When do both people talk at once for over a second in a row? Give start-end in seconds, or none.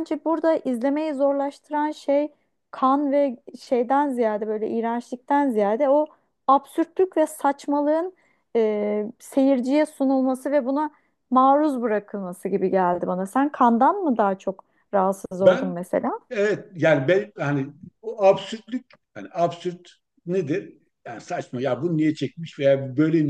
none